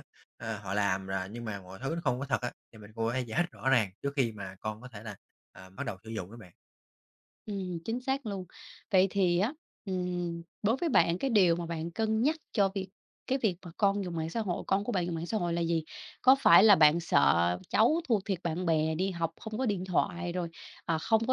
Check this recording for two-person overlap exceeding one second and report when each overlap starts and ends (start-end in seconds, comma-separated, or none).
none